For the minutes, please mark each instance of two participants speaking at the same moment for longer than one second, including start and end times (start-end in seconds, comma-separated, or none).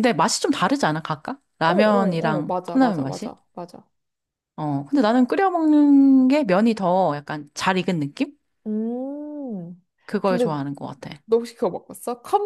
1.6-3.3